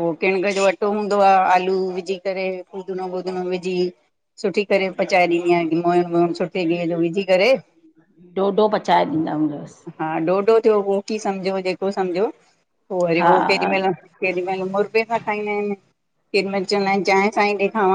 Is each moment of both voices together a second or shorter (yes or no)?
yes